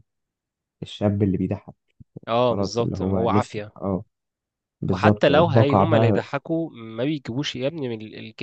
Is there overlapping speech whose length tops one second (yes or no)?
yes